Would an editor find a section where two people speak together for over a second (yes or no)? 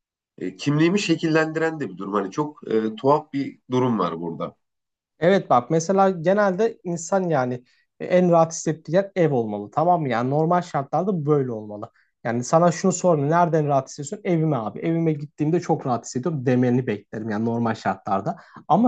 no